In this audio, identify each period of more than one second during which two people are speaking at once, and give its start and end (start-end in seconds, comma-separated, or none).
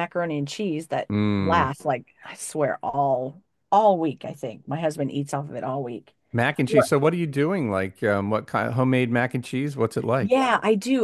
none